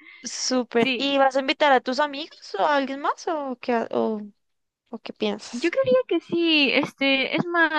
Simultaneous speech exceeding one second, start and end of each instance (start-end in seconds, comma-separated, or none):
none